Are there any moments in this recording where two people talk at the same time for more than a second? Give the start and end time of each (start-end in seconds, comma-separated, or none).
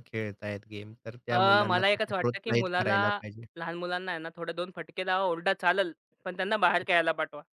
1.3-3.0